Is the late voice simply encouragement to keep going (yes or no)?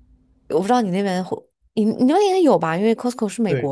no